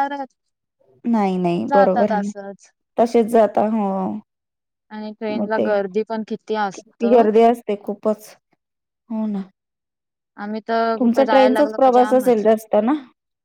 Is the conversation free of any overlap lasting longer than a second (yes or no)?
no